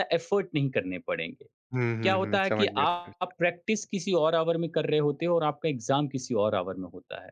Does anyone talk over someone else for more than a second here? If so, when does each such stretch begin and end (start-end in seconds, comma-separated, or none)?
2.0-3.4